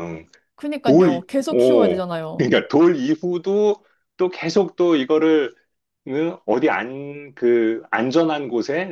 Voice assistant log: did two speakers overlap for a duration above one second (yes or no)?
yes